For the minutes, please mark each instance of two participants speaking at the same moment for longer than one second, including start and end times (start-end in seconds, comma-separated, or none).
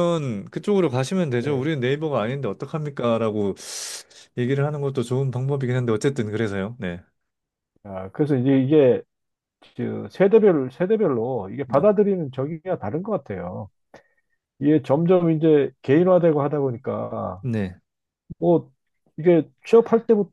none